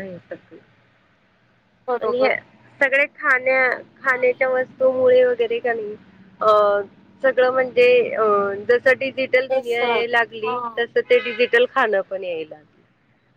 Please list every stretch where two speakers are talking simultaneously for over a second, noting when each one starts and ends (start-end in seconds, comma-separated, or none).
9.5-10.8